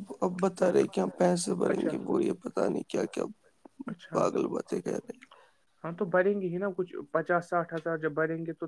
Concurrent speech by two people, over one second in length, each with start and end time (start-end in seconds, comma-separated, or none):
none